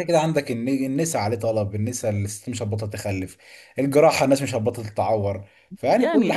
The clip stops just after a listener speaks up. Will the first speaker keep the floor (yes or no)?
no